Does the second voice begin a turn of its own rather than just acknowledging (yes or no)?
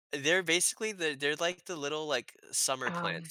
no